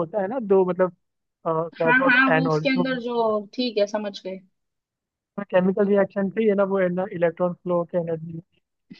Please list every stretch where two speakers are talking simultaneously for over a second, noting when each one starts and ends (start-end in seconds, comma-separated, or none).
1.8-3.2